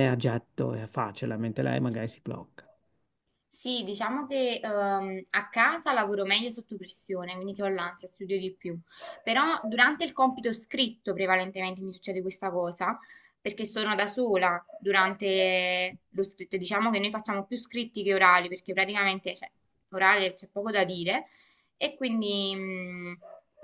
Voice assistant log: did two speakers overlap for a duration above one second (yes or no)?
no